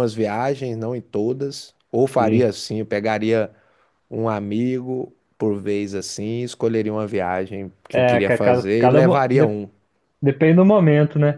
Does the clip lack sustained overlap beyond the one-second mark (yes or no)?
no